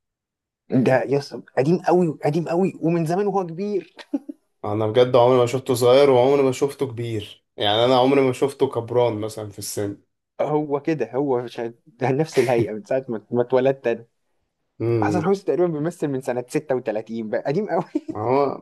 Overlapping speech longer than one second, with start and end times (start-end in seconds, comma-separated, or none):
none